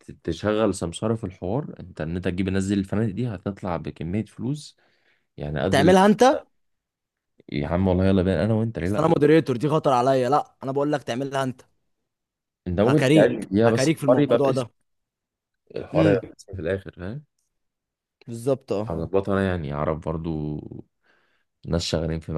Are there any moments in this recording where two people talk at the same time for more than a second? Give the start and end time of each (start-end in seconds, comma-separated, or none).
12.8-14.7